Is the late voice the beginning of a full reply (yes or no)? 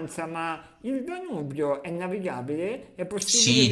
yes